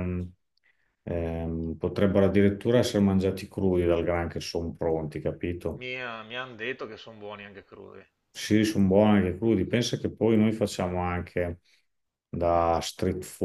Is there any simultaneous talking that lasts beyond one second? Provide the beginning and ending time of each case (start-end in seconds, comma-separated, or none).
none